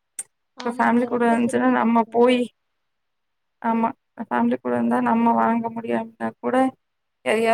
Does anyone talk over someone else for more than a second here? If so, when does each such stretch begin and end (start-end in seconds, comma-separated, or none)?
0.7-2.4